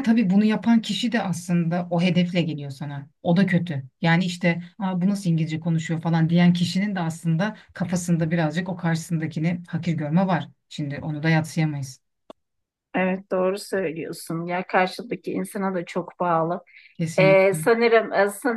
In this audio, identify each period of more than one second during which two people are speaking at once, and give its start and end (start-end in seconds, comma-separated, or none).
none